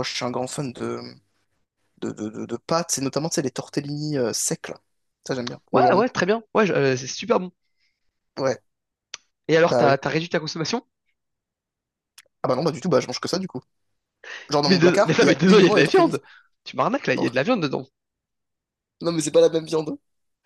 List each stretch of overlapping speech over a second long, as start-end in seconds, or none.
14.7-16.2